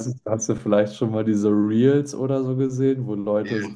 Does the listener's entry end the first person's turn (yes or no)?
no